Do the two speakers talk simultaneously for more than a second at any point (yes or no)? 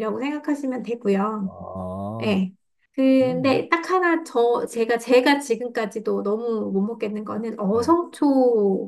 no